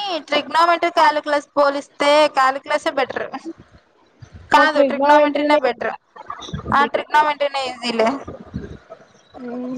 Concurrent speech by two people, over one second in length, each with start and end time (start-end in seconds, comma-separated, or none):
4.6-5.9